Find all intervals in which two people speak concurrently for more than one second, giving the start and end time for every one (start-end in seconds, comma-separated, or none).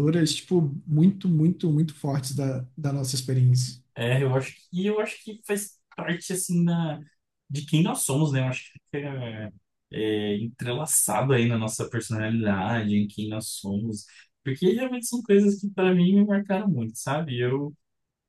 none